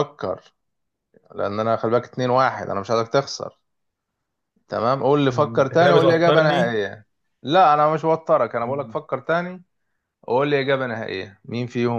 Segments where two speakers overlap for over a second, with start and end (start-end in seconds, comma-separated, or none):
5.3-6.8